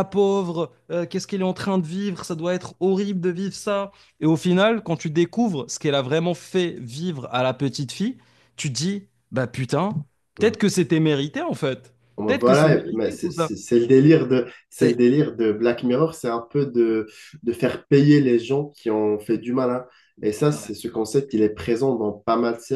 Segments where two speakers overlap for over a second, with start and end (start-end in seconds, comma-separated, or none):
12.2-13.5